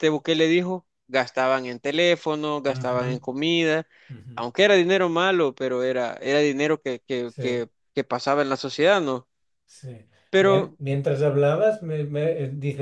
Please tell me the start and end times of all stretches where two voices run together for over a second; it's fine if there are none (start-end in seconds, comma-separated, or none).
none